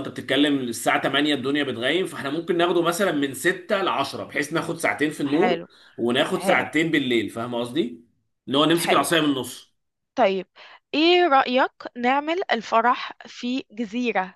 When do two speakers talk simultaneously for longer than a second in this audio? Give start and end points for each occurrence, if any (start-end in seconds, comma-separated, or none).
none